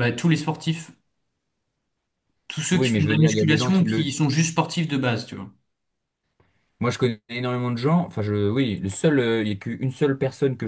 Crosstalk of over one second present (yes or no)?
yes